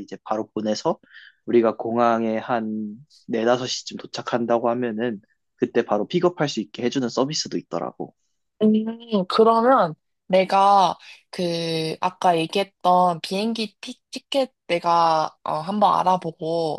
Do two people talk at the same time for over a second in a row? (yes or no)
no